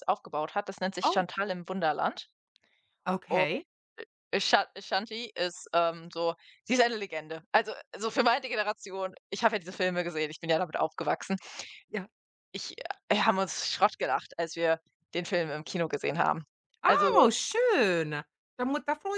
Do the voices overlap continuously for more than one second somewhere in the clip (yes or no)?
no